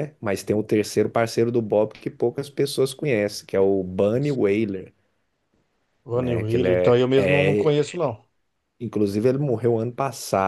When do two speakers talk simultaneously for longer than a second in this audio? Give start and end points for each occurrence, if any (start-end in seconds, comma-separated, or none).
6.2-7.8